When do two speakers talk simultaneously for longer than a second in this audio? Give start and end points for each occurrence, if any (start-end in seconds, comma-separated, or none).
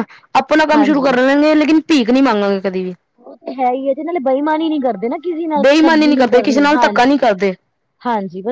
5.6-7.2